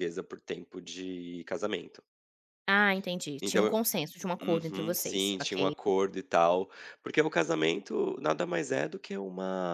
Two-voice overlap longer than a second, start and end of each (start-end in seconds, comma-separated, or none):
4.4-5.7